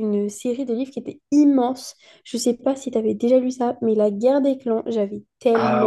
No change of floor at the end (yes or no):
yes